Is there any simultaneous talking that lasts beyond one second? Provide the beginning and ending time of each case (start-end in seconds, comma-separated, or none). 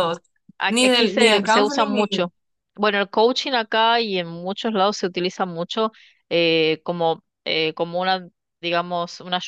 0.7-2.3